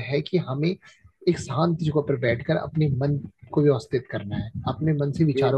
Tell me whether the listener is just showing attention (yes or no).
yes